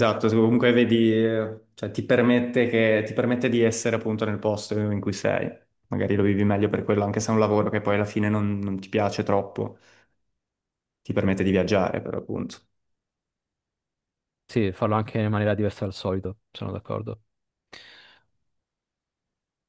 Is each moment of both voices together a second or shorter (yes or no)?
yes